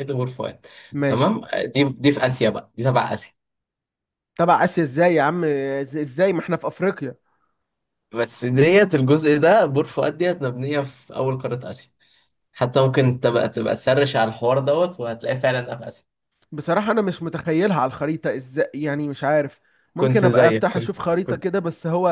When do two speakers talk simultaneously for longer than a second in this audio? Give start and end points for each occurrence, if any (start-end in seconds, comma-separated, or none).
20.0-21.5